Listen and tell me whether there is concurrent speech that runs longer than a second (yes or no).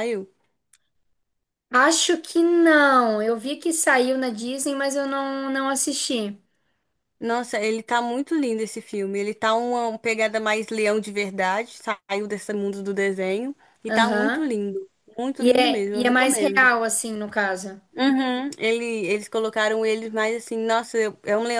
yes